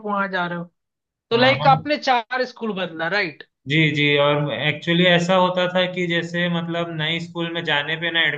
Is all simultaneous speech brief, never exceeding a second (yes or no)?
yes